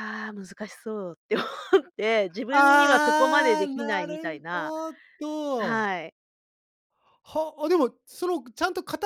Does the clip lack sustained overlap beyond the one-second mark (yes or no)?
no